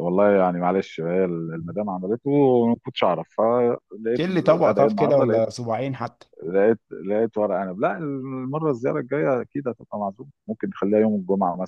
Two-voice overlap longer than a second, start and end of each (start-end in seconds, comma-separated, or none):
4.2-5.4